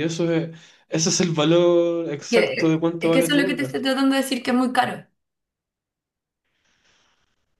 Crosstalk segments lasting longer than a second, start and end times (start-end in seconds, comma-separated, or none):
2.3-3.7